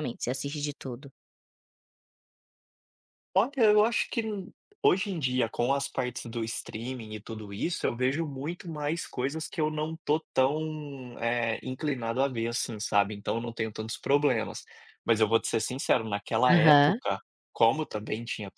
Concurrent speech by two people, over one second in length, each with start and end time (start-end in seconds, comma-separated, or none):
none